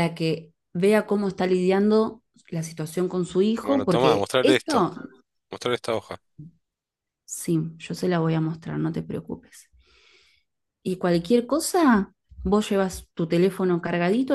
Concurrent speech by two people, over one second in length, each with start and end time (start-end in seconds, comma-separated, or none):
3.6-4.9